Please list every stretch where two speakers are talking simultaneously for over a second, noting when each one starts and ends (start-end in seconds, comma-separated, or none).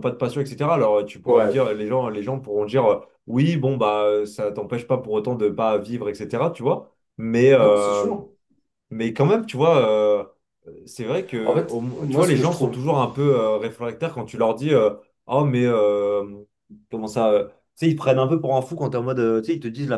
11.4-12.8